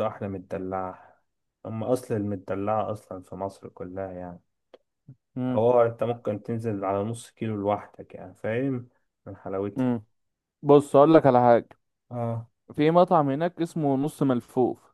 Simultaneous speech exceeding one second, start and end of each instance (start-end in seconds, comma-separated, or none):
none